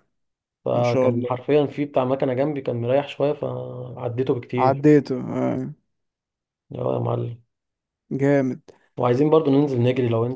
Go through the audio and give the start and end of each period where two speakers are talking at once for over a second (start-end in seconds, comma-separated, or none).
none